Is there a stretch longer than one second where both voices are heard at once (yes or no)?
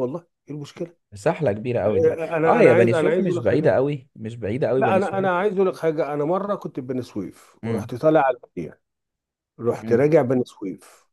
yes